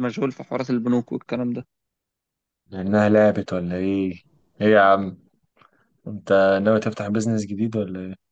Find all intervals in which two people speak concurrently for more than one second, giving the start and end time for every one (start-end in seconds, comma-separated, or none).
none